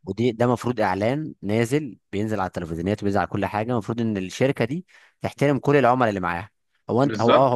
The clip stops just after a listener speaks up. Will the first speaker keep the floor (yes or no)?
no